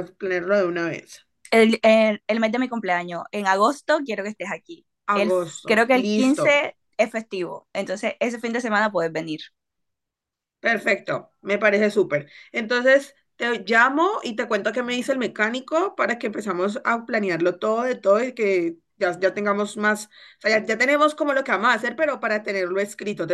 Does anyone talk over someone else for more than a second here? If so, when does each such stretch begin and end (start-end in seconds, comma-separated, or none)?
5.2-6.6